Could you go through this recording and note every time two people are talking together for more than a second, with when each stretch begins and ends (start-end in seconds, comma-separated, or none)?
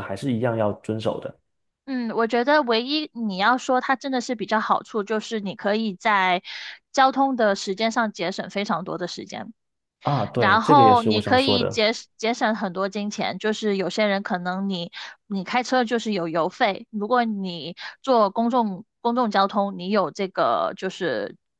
10.4-11.8